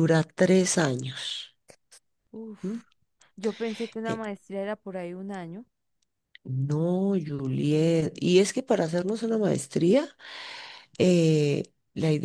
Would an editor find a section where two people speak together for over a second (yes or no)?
no